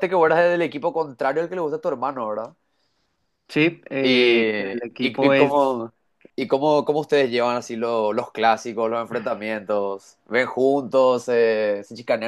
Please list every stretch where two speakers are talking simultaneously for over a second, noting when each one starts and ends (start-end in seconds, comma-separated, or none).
4.0-5.8